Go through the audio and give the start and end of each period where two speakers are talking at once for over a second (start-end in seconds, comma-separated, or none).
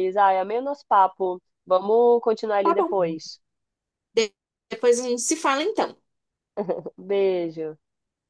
none